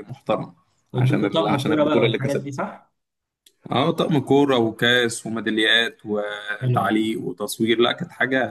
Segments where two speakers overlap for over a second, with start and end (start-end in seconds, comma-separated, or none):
0.9-2.5